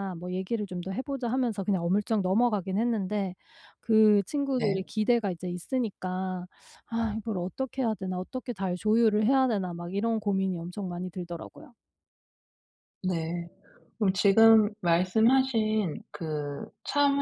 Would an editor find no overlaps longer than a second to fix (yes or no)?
yes